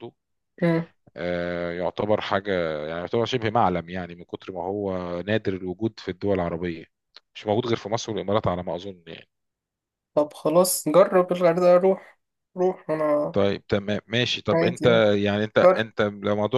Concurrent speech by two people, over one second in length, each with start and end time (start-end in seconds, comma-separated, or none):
none